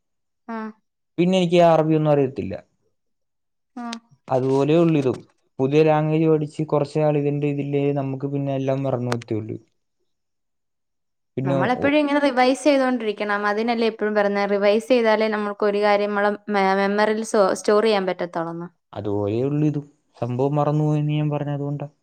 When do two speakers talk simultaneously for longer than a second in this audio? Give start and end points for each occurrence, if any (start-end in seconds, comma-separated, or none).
none